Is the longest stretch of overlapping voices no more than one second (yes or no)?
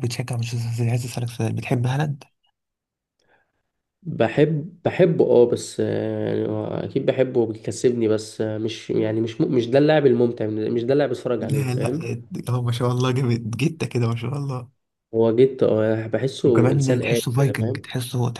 no